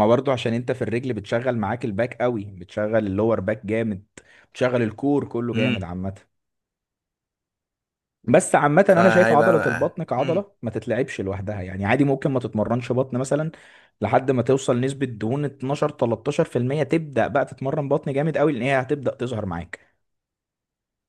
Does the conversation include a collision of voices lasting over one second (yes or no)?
yes